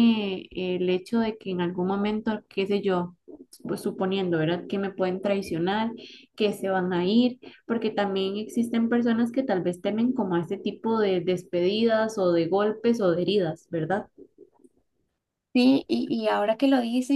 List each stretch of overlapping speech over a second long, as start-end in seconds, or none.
none